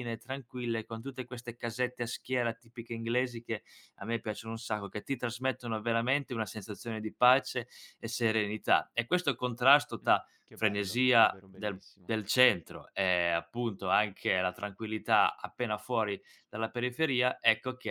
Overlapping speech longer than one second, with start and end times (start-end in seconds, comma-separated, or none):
10.0-12.1